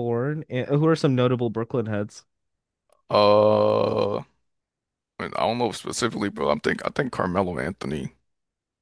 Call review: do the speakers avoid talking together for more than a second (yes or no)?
yes